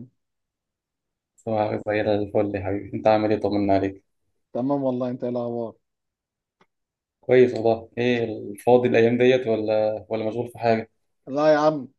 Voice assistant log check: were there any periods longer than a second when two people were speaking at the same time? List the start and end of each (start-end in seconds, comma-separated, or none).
none